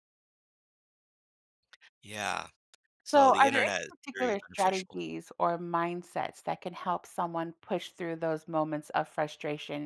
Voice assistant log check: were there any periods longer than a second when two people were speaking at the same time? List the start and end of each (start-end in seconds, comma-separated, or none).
3.1-5.0